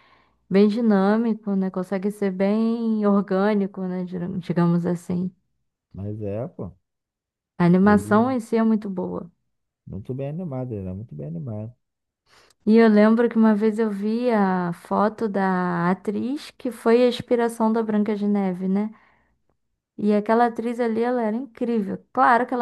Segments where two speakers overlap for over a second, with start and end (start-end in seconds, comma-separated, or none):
none